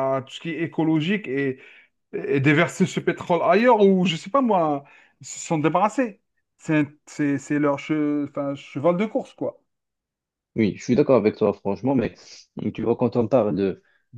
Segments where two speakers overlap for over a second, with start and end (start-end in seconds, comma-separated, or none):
none